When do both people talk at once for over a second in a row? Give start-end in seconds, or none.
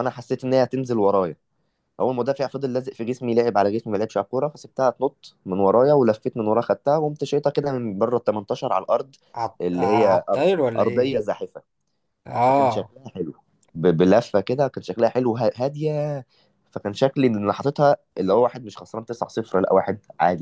9.6-11.2